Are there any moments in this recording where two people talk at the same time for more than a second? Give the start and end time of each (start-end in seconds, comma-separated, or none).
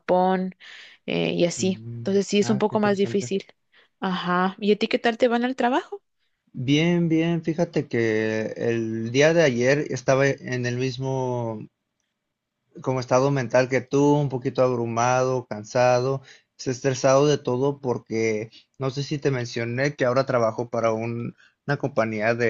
1.6-3.3